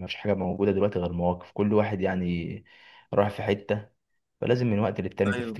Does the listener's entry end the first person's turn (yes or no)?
no